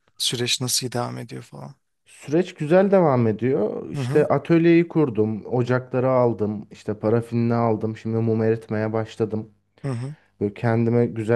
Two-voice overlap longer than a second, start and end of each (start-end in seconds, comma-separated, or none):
none